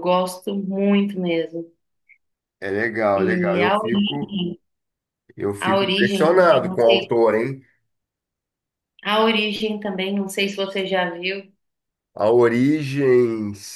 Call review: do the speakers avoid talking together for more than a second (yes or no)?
no